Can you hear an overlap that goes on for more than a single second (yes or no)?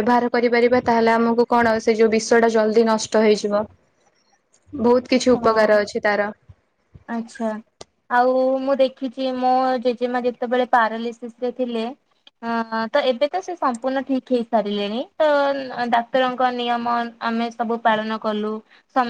no